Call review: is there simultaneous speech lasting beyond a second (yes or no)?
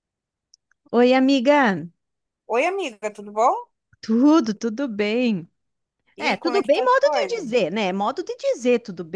yes